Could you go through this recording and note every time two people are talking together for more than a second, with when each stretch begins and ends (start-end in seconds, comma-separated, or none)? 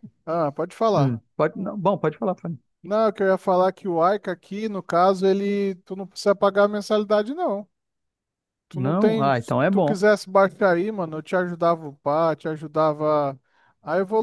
8.7-10.0